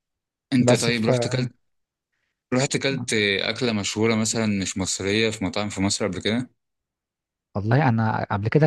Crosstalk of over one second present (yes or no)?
no